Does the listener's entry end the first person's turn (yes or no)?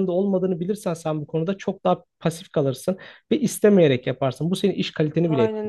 yes